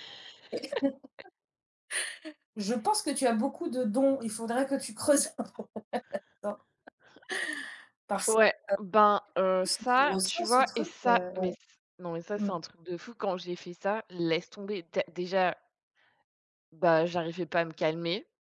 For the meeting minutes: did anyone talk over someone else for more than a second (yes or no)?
yes